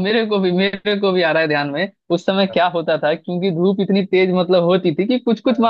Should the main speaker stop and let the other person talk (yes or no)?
no